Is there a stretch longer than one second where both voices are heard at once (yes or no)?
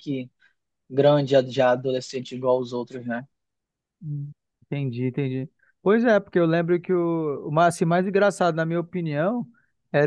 no